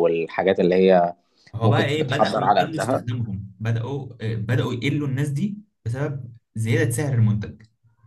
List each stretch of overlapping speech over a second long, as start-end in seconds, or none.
1.6-3.0